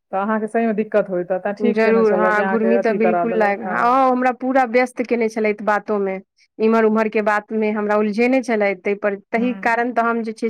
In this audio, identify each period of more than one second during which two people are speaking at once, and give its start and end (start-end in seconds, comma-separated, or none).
1.7-3.8